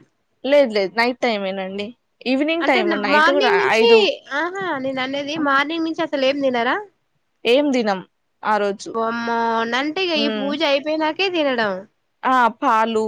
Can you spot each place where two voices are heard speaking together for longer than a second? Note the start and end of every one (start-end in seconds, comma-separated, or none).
none